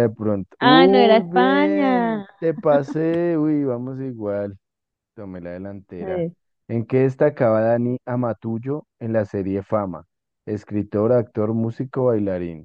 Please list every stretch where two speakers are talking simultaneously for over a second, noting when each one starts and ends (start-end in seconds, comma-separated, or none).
0.6-2.3